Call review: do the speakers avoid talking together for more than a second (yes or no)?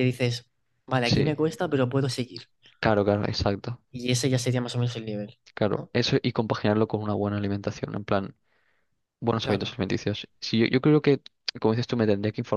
yes